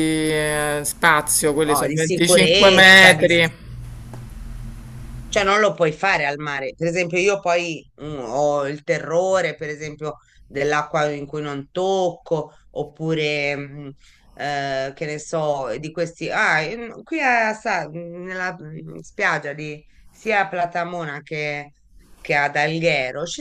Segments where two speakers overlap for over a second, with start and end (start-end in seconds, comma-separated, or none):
1.6-3.3